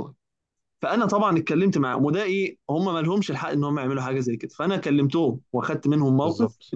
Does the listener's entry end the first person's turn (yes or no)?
no